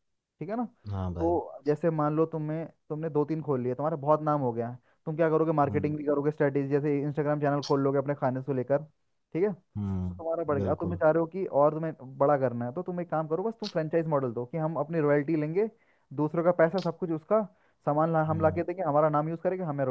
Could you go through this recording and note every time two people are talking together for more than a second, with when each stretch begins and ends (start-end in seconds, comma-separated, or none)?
9.8-11.0